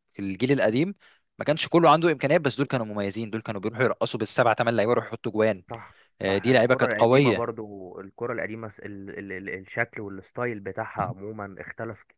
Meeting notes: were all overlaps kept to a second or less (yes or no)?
no